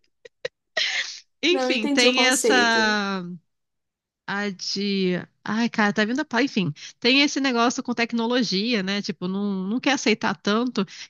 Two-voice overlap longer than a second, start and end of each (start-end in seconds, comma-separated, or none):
1.5-3.0